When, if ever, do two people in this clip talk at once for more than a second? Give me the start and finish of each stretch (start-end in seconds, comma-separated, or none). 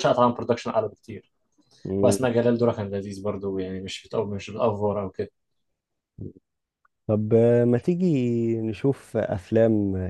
none